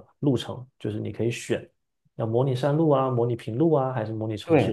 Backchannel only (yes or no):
no